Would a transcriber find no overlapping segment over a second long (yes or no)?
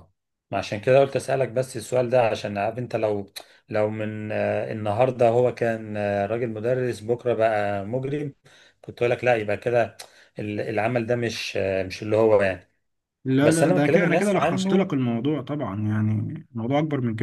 no